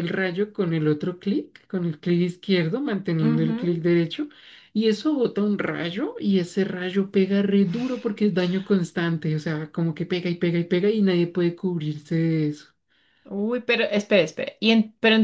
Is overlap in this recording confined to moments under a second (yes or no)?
yes